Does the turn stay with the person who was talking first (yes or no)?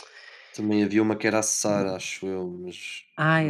no